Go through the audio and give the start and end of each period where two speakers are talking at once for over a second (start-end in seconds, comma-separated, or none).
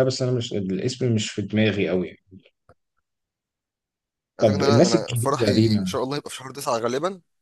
4.4-6.0